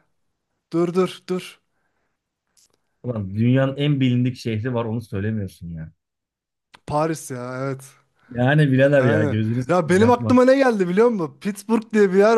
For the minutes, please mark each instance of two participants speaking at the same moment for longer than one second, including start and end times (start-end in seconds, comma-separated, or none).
9.0-10.4